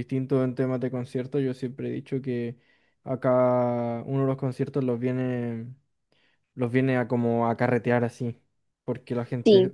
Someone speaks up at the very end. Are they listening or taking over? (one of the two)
listening